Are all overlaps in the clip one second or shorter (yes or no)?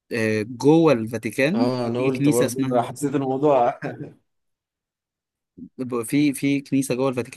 no